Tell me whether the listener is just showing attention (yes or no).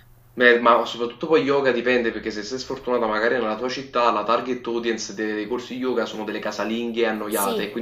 no